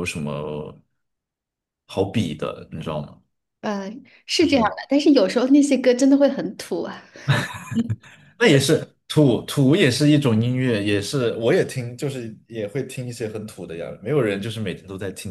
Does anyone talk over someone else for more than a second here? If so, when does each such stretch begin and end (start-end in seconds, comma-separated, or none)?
none